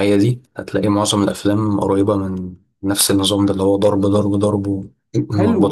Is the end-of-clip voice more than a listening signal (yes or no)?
yes